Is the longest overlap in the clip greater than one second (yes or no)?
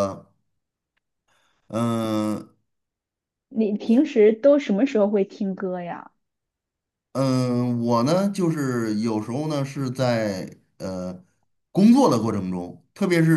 no